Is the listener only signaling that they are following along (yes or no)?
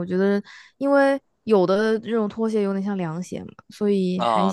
no